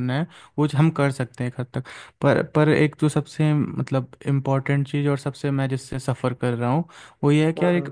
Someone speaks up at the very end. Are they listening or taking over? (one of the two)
listening